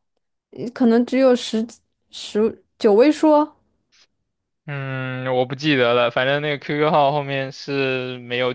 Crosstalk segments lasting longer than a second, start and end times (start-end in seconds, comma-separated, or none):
none